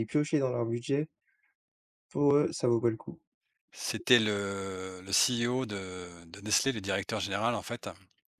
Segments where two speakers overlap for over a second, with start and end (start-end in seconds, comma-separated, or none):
none